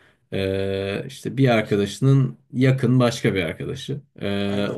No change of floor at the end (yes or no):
yes